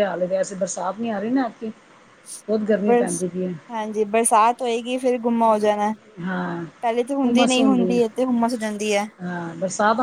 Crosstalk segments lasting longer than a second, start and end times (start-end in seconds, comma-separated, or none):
none